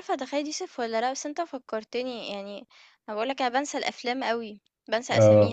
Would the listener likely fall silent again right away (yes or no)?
yes